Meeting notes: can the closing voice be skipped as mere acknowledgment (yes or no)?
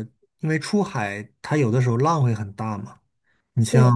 yes